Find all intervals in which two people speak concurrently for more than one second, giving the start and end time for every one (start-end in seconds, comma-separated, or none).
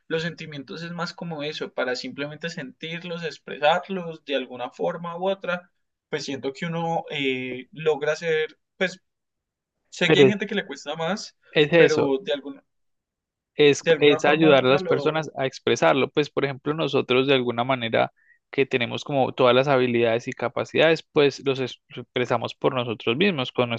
13.8-15.3